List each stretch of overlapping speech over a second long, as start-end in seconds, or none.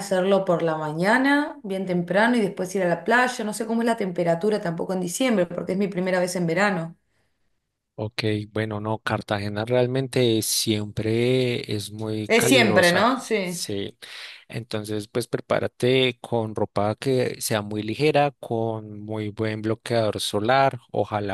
12.3-13.7